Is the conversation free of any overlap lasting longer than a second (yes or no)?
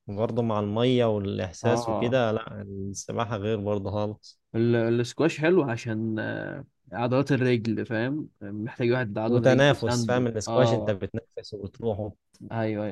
no